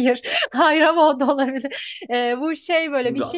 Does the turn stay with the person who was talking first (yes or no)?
yes